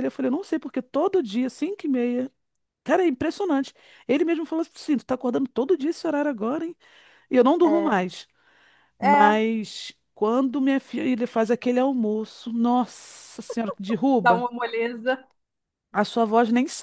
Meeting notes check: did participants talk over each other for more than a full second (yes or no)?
no